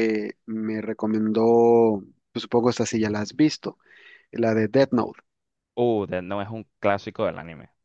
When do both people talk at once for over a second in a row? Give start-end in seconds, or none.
none